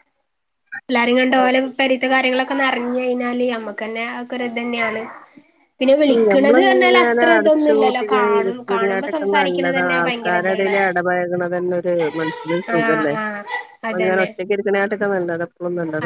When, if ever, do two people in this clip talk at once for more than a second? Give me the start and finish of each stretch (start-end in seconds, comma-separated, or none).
7.8-10.7